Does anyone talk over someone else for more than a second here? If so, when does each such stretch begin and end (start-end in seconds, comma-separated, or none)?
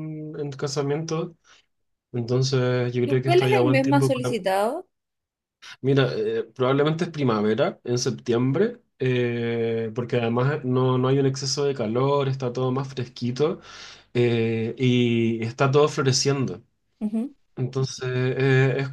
3.0-4.4